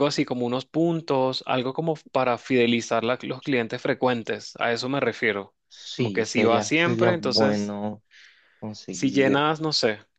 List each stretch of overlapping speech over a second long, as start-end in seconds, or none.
6.0-7.7